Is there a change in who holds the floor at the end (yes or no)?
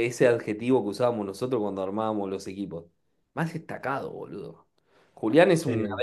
no